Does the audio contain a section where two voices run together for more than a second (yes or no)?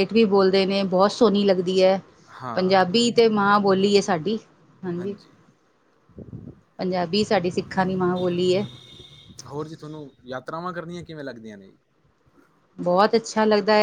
no